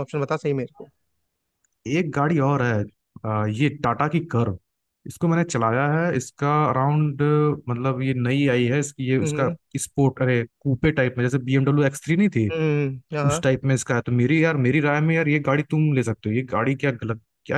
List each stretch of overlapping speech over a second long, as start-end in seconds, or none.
none